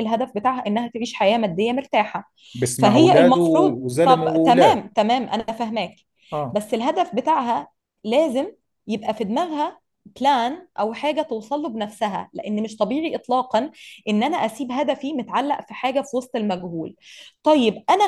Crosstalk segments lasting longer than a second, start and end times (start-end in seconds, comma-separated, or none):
2.8-4.8